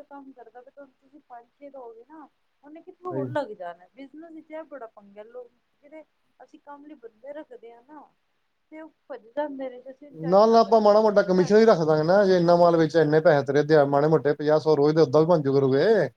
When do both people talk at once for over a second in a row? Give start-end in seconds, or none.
none